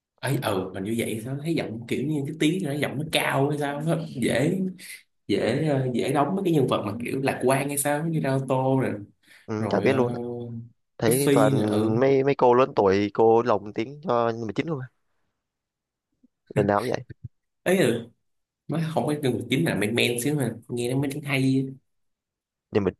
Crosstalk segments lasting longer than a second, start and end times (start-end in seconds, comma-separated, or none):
none